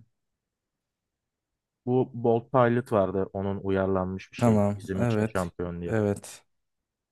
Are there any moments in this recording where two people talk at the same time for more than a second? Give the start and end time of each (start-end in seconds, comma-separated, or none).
4.4-6.0